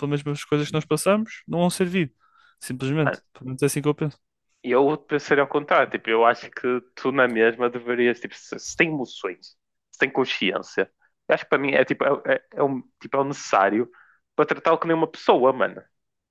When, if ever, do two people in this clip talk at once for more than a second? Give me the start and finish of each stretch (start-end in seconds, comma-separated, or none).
none